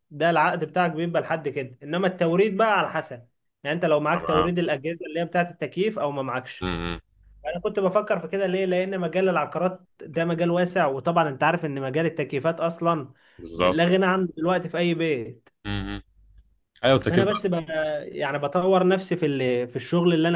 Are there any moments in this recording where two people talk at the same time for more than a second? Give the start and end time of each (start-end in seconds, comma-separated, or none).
none